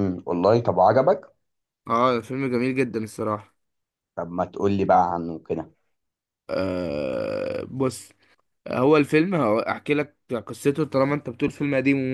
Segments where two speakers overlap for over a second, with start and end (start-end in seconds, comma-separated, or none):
none